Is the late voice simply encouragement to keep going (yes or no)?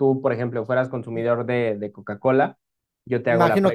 no